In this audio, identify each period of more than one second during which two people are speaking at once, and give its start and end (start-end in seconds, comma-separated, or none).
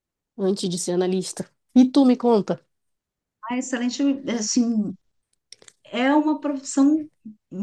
none